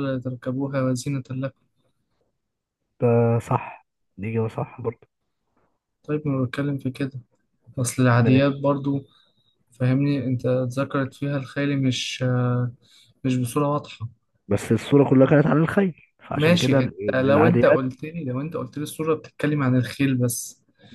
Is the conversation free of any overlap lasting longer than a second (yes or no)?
no